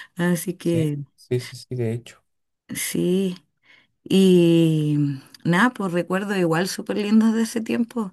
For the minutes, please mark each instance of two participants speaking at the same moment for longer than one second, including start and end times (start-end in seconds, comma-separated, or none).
none